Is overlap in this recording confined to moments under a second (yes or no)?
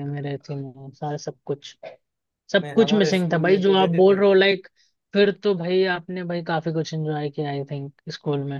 no